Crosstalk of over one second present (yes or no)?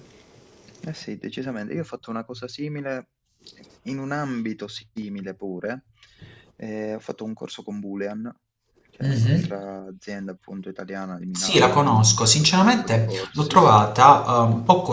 yes